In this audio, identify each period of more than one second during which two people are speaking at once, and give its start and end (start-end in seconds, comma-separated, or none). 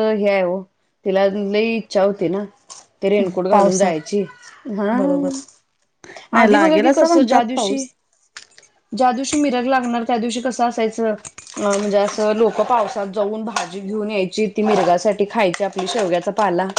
6.4-7.8